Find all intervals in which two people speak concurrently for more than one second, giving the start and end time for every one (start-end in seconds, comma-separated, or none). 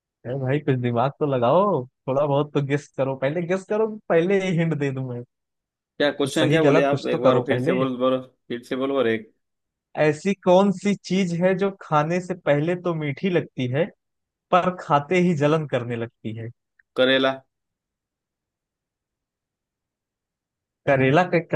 6.2-7.8